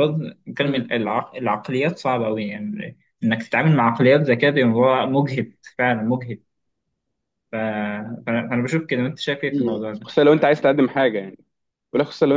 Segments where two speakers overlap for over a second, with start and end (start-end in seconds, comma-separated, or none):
none